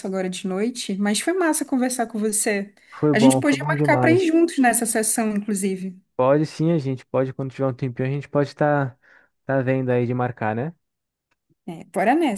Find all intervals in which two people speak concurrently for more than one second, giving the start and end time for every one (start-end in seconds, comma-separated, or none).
3.1-4.3